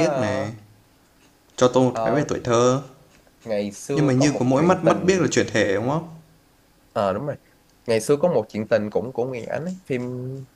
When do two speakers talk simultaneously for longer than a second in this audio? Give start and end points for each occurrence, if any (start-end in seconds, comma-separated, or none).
3.9-5.2